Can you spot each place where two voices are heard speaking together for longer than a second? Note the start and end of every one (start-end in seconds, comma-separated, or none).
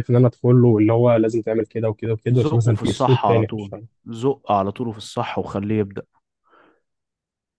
2.3-3.9